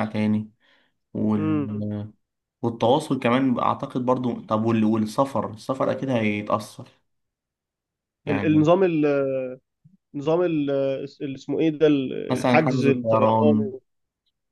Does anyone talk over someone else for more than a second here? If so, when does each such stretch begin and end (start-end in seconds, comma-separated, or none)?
12.3-13.7